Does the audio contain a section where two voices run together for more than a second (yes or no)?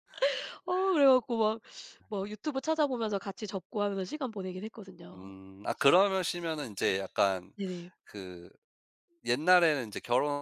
no